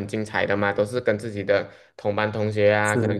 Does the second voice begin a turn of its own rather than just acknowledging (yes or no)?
no